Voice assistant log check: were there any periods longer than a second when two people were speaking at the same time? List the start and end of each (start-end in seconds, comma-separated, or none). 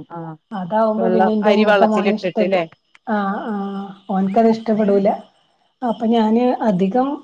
1.0-2.6